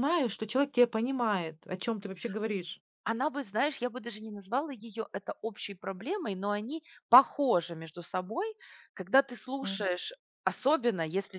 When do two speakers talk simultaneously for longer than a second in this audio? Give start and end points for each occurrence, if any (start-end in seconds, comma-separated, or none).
none